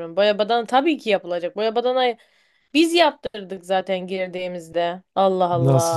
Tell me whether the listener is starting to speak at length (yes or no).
yes